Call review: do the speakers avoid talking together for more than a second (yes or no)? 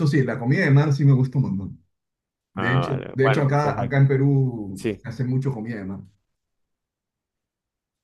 no